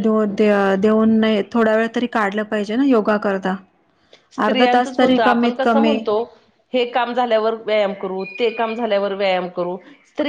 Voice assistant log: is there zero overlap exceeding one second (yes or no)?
no